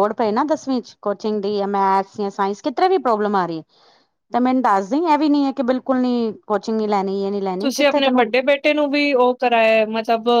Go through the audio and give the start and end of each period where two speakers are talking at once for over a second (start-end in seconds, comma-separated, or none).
none